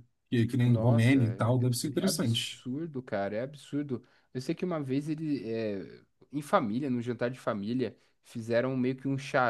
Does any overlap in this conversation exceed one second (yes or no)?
yes